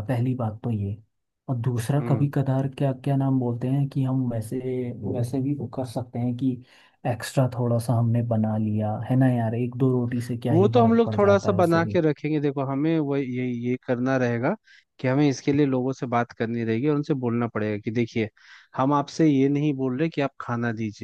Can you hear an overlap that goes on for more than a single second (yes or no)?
yes